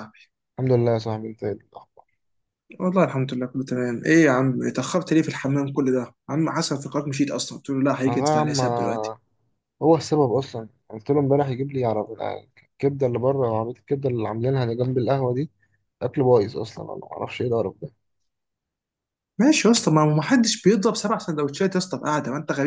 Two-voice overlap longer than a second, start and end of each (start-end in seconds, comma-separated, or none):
none